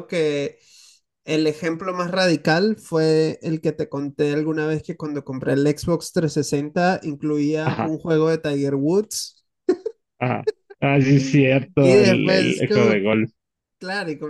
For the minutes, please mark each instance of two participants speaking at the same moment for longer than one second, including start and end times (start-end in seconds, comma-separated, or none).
11.8-13.1